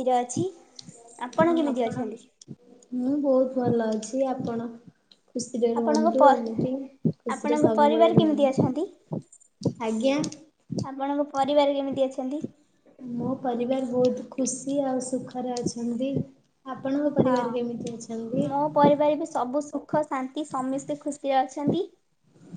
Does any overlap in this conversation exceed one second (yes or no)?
yes